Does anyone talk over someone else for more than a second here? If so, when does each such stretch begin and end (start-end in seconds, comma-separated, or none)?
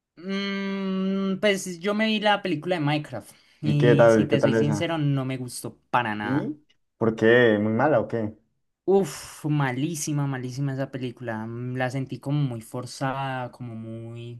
3.6-5.0